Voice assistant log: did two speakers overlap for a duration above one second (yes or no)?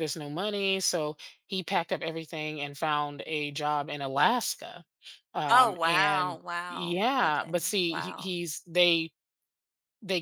yes